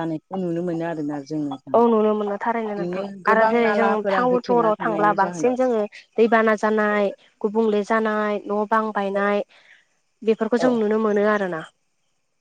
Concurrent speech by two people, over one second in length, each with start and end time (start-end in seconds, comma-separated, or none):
2.6-5.6